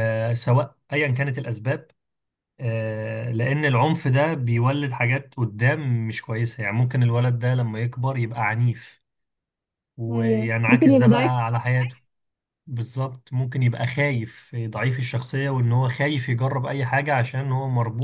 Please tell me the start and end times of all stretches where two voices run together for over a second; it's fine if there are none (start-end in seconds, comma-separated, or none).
10.1-11.8